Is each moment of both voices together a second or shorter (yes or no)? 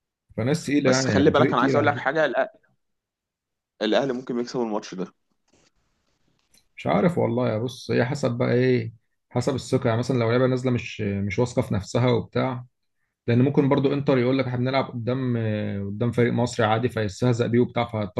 no